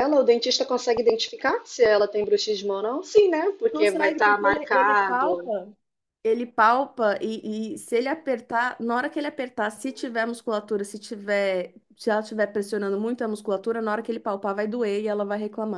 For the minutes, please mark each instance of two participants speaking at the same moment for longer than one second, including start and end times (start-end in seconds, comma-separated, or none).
3.7-5.5